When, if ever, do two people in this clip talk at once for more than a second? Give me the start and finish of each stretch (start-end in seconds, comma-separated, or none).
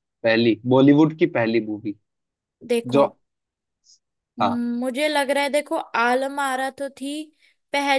none